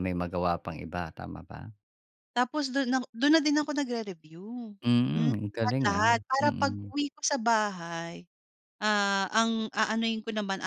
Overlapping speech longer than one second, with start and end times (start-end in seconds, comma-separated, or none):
5.1-6.9